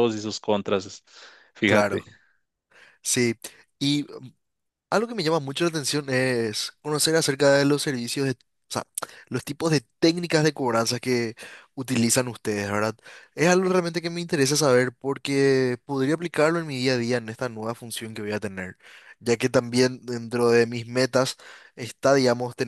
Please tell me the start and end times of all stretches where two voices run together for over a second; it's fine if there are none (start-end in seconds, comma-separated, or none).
none